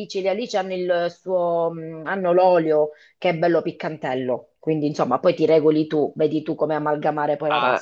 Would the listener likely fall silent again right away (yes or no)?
no